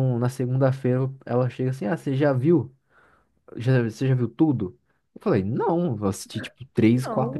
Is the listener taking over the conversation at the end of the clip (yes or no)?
no